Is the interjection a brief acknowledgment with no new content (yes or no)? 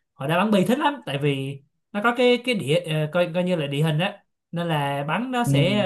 yes